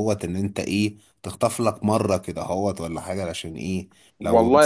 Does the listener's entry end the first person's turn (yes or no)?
yes